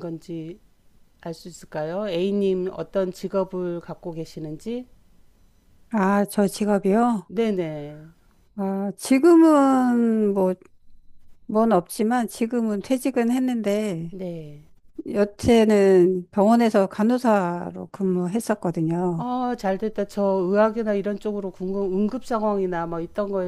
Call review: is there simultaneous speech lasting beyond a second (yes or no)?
no